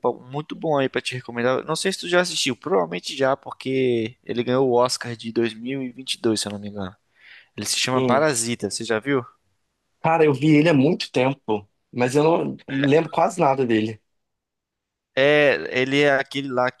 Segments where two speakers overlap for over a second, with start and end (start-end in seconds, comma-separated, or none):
none